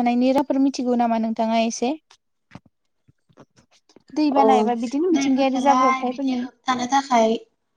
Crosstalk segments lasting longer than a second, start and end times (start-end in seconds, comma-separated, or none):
5.2-6.4